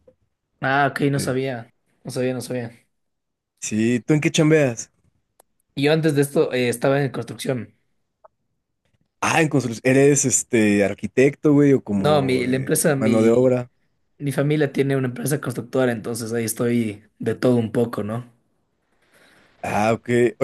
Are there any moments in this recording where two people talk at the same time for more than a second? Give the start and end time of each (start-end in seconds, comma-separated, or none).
12.0-13.6